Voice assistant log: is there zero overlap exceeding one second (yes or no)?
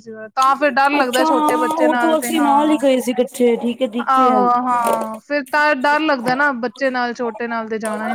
no